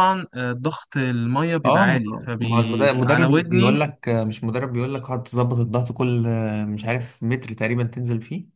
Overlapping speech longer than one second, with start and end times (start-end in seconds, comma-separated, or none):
1.6-3.8